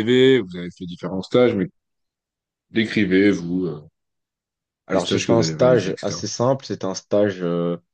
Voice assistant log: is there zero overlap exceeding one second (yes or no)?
no